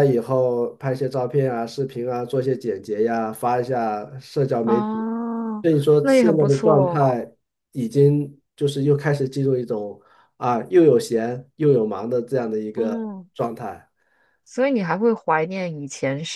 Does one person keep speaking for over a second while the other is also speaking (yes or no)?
yes